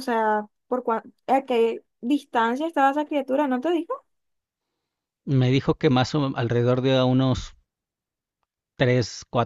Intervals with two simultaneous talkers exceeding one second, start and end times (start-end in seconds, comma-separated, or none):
none